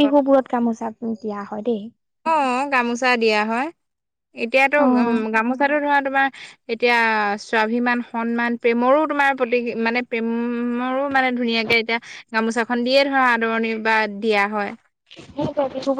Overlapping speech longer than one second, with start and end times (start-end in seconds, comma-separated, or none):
none